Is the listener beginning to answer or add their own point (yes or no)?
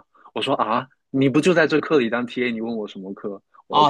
yes